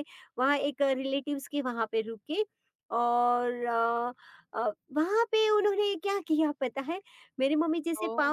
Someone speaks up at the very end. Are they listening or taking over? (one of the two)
listening